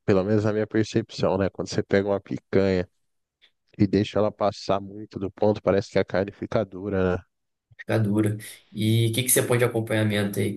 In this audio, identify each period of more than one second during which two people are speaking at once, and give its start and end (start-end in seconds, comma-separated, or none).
none